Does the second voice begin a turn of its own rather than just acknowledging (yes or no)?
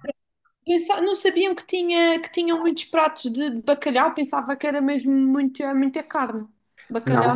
yes